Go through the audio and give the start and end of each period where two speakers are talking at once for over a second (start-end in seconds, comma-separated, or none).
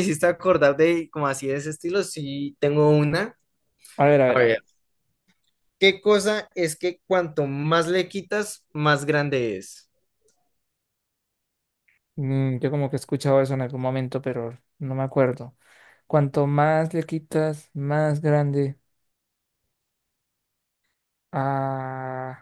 none